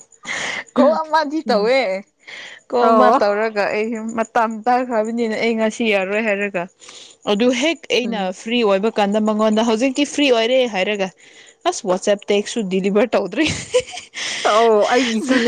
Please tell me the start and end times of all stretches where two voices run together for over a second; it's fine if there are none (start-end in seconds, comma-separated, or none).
none